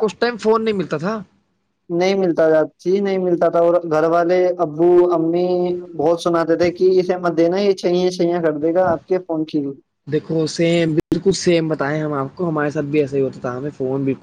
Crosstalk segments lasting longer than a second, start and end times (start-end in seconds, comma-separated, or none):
none